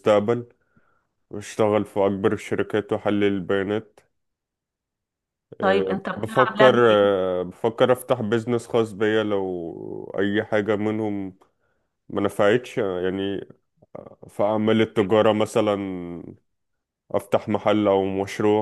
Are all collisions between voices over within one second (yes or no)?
no